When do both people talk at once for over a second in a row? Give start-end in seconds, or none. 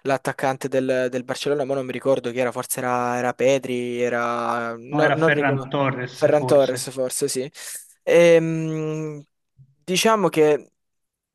4.9-6.9